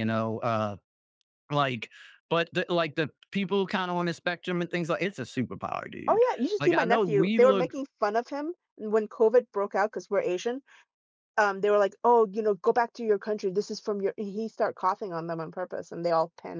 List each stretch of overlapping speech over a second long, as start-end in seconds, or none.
6.1-7.8